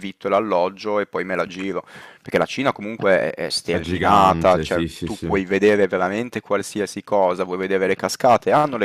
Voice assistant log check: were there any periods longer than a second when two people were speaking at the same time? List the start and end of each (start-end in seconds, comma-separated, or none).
3.7-5.3